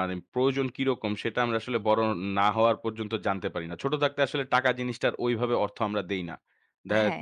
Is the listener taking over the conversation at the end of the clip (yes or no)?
no